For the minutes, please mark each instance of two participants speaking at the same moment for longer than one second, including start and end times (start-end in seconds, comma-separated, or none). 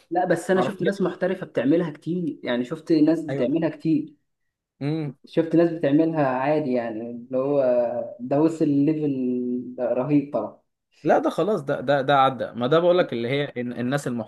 none